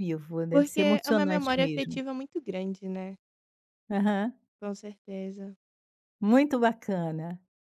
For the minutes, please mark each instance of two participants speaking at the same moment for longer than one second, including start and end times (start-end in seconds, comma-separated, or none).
0.5-2.0